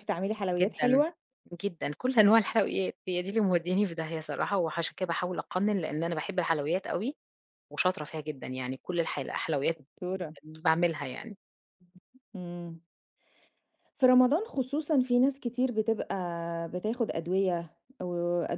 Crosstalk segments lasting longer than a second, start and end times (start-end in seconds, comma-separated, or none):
none